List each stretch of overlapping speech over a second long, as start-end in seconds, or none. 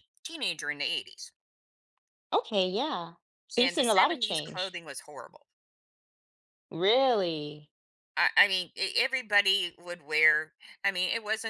3.6-4.8